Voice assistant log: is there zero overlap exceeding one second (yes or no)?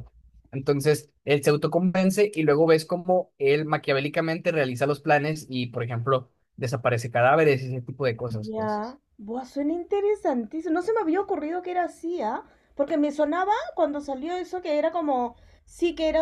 yes